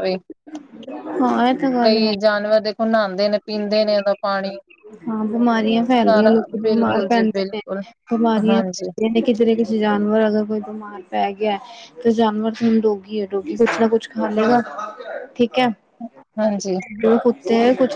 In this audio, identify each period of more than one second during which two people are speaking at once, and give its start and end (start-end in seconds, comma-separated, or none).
5.9-7.6